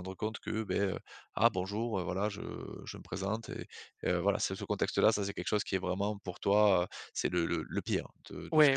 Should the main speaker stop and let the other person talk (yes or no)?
yes